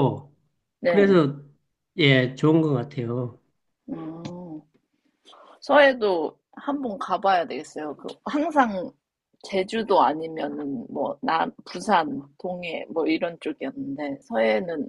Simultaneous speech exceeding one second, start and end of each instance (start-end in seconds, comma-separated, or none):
none